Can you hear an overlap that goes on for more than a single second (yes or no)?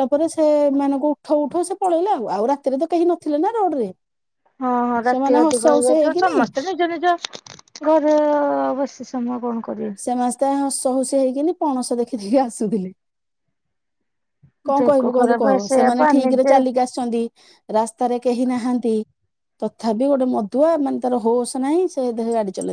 yes